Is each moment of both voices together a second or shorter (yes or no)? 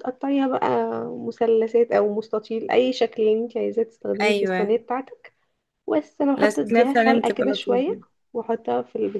no